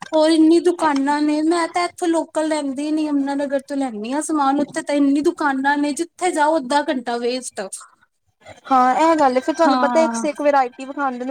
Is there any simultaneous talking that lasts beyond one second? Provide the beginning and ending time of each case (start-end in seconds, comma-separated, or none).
none